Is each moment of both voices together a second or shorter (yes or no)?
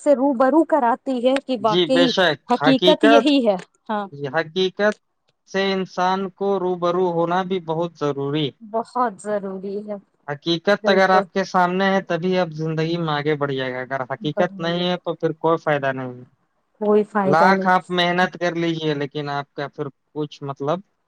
yes